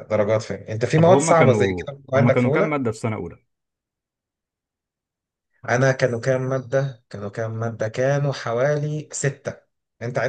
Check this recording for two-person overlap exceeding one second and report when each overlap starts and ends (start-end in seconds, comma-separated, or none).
0.9-2.8